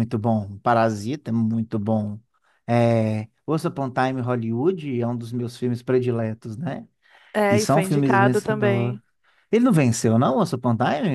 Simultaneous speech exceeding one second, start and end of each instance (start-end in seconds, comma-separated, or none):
7.5-9.0